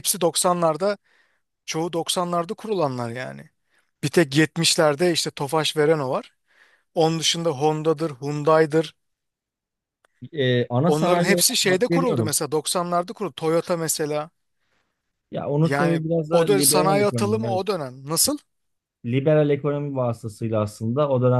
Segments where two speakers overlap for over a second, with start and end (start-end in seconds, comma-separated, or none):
10.8-12.3, 15.6-17.6